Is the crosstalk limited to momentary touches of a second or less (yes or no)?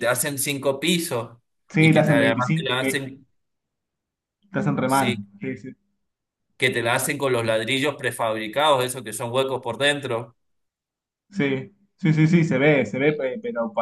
no